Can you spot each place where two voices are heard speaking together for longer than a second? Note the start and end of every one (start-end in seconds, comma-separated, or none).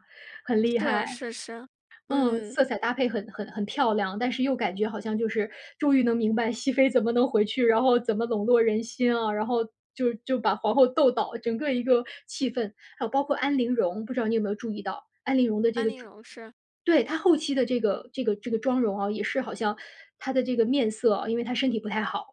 none